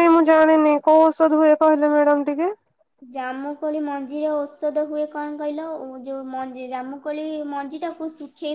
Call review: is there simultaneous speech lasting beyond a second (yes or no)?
no